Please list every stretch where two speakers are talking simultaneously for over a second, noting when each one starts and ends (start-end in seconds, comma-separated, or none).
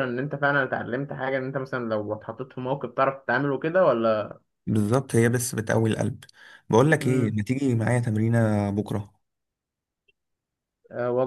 none